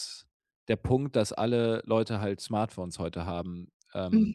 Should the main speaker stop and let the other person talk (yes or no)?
no